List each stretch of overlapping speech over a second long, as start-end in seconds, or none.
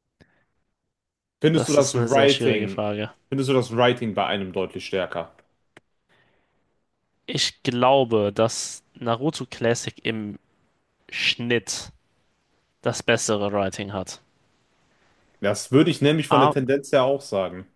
1.5-2.9